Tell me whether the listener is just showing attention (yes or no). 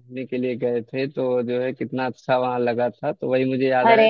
yes